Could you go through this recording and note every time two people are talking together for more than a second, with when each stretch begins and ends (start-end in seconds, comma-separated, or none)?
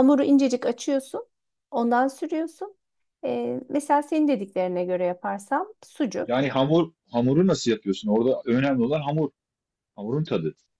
none